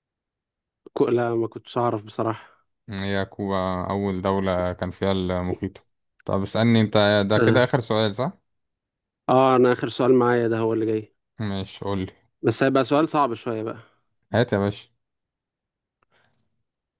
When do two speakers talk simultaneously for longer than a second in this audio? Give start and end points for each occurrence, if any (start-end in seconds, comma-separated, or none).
none